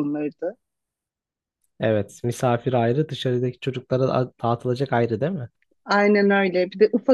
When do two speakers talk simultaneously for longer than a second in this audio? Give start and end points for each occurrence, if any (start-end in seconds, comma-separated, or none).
none